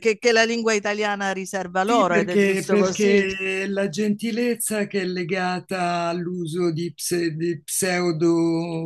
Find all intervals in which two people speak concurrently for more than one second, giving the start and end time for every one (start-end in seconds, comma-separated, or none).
1.8-3.2